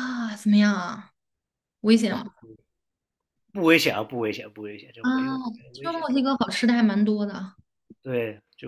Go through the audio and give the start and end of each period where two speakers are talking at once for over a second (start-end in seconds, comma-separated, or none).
none